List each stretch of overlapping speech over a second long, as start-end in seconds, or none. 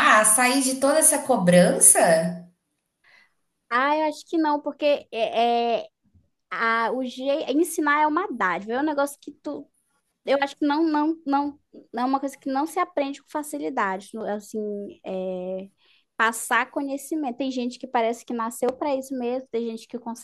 none